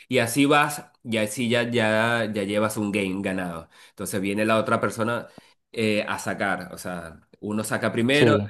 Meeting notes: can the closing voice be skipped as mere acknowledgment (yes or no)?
yes